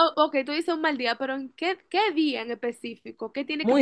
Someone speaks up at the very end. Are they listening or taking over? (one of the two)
taking over